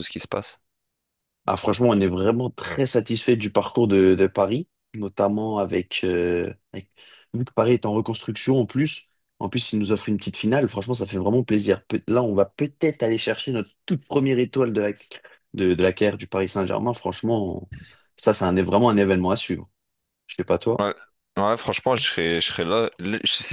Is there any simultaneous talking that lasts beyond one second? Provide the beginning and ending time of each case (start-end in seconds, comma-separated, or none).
none